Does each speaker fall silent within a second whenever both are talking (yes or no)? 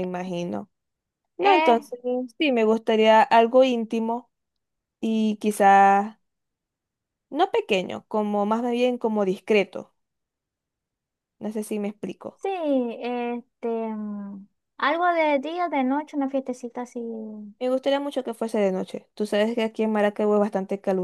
yes